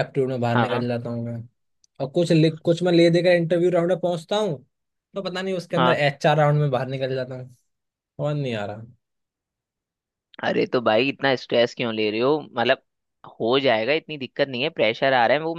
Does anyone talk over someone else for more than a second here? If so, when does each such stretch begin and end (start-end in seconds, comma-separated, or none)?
none